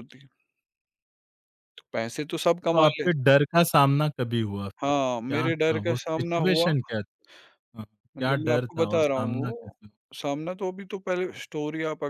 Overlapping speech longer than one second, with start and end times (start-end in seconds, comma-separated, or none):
4.8-6.7, 8.2-9.8